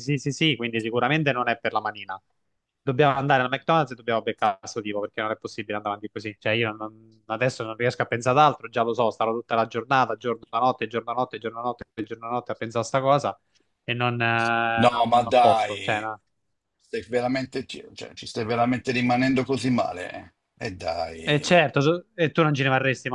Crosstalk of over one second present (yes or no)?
yes